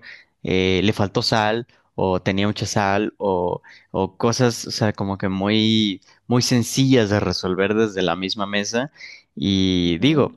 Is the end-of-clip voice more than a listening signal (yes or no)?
no